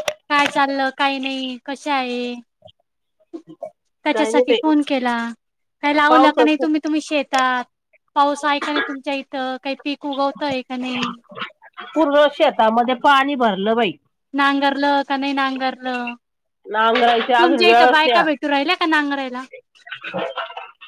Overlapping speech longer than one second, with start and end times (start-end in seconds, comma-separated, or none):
16.9-18.2